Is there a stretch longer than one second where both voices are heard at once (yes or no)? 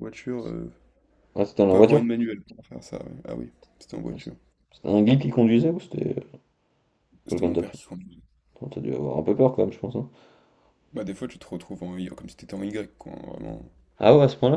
no